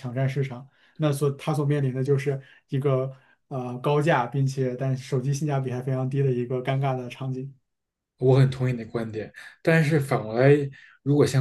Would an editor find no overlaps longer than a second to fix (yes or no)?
yes